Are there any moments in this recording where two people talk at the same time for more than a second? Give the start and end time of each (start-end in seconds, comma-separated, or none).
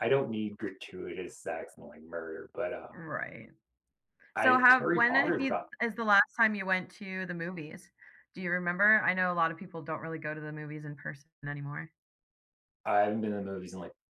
4.3-5.7